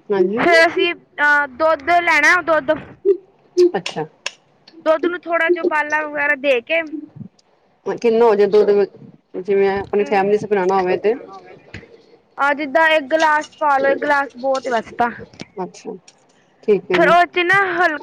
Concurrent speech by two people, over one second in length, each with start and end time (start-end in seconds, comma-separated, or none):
none